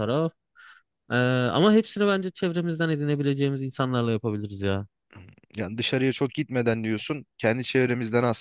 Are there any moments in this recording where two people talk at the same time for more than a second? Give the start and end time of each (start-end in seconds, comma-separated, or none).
none